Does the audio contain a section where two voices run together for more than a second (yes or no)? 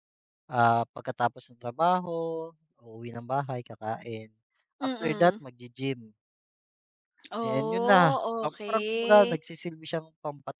yes